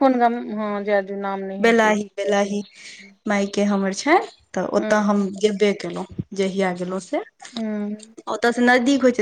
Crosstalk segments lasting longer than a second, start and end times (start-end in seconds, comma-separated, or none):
none